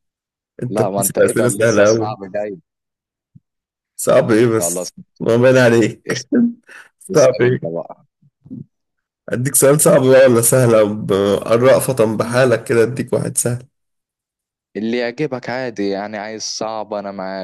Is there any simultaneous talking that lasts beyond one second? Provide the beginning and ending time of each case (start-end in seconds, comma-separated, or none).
0.7-2.2